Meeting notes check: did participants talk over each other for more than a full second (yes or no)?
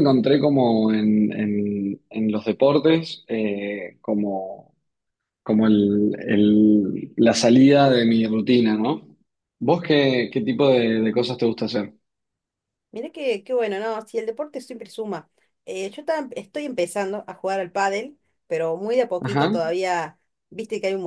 no